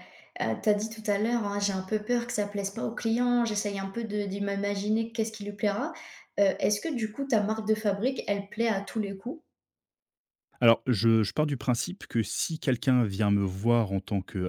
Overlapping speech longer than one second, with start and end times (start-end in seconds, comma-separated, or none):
none